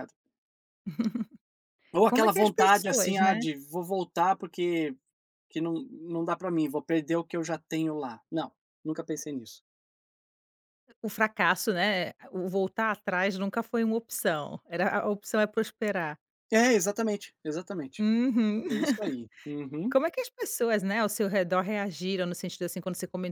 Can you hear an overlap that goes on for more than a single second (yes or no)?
yes